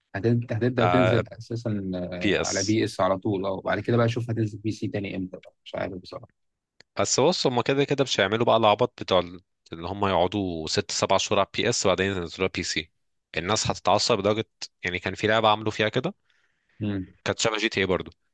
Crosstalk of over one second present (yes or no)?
no